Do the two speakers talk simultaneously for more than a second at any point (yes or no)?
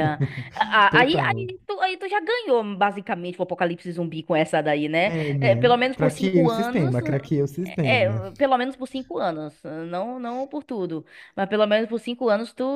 yes